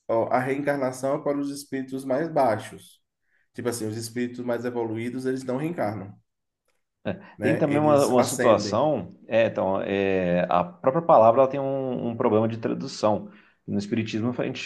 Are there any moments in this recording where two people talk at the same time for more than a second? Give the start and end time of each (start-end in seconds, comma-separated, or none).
7.4-8.9